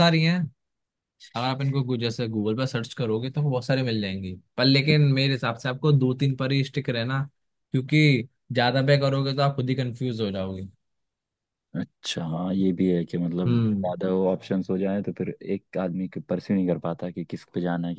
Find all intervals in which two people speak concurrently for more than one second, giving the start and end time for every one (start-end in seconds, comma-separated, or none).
none